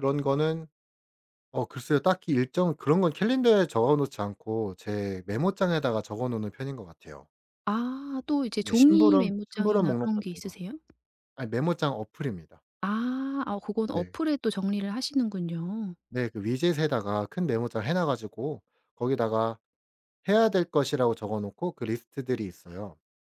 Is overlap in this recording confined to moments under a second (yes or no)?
no